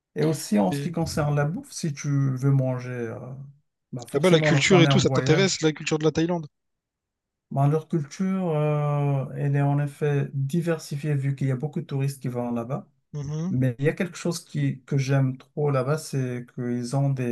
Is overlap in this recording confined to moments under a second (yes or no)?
no